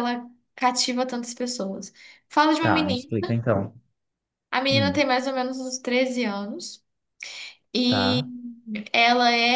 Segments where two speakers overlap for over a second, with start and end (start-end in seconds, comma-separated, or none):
none